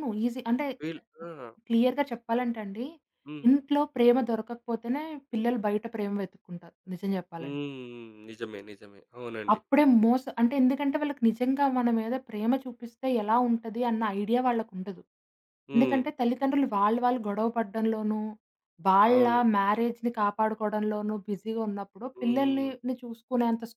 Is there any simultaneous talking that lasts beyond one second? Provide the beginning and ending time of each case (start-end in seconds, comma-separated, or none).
none